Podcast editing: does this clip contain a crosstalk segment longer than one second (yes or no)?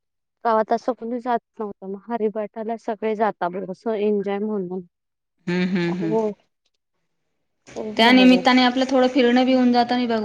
no